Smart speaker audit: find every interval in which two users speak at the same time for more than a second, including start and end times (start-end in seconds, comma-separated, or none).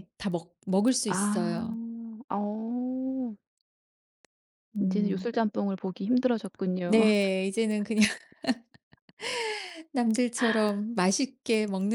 none